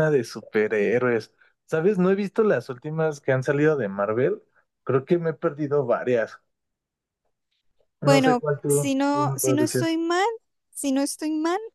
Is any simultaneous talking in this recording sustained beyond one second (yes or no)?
yes